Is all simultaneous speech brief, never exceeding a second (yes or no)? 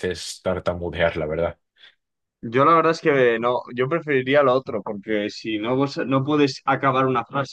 yes